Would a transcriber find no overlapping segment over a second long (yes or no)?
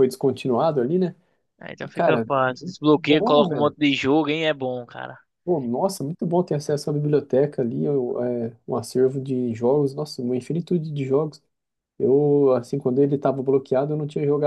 no